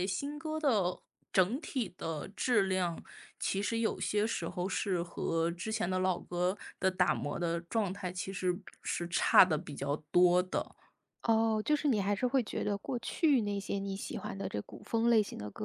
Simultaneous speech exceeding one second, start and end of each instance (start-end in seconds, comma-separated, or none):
none